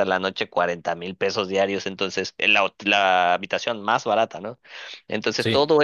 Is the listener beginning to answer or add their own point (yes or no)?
no